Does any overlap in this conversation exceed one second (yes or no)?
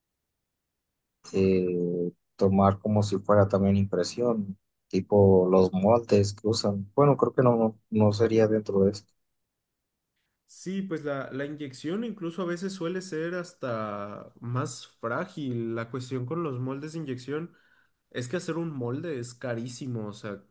no